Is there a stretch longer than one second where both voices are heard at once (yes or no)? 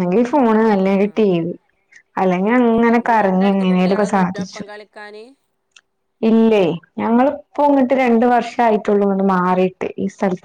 yes